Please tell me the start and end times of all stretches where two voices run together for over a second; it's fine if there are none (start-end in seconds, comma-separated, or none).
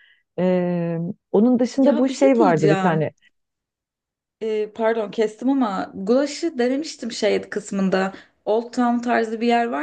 1.8-3.1